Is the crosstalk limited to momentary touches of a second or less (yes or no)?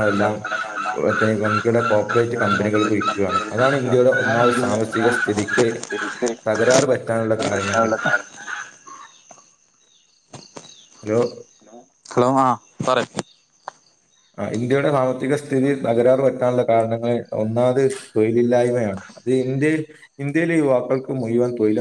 no